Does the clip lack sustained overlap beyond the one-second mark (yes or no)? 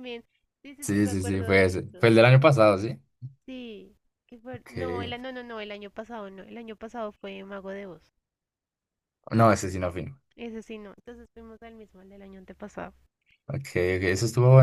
no